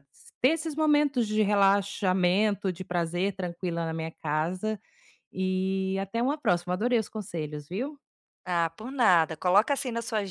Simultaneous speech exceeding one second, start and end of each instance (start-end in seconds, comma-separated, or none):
none